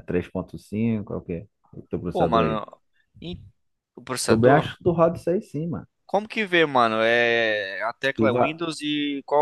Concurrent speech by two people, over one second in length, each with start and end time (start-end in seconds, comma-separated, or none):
none